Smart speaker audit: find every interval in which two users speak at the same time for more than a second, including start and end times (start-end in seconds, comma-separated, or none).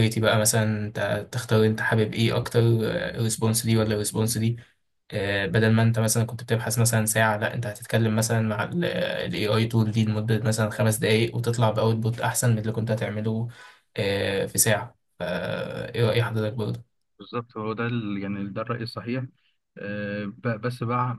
none